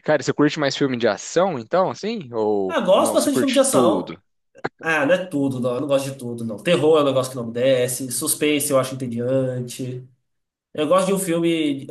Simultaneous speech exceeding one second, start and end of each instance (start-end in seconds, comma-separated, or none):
2.7-4.2